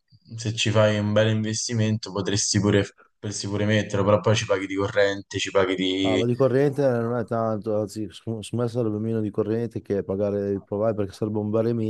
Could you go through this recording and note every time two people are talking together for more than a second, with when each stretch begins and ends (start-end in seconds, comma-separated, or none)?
none